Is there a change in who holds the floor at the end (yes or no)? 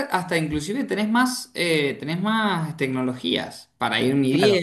yes